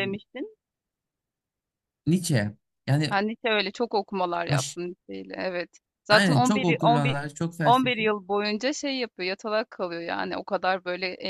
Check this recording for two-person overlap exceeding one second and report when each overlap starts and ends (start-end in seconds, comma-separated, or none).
6.1-8.0